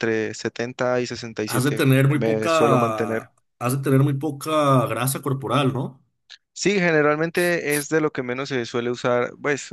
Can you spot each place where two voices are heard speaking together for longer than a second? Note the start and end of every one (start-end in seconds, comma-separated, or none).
1.5-3.3